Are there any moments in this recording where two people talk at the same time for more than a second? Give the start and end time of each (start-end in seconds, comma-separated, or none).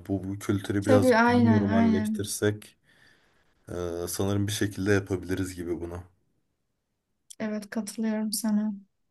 0.8-2.3